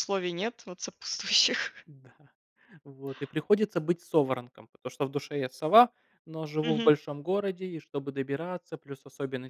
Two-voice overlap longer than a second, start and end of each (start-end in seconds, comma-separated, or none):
none